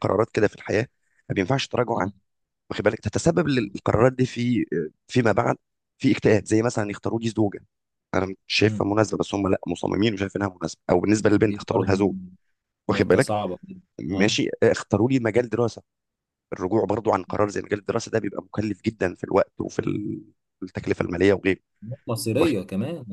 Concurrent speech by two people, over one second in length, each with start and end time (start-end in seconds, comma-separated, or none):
none